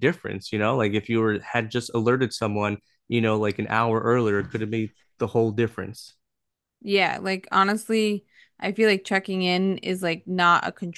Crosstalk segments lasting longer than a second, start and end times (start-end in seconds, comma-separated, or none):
none